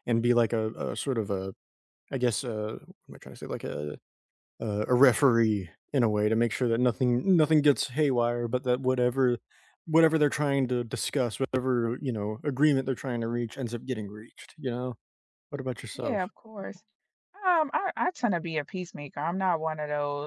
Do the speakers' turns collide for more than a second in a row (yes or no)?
no